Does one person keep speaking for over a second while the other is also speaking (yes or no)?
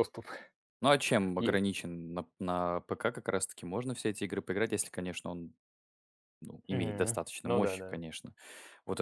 yes